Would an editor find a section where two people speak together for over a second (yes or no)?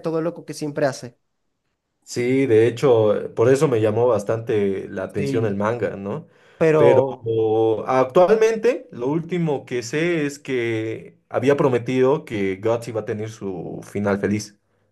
no